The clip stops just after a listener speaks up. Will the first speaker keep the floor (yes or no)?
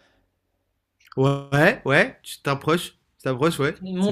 no